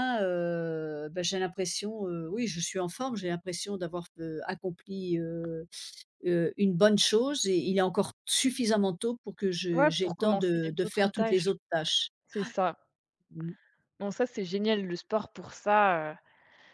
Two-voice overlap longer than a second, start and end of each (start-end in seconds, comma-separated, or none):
9.8-11.5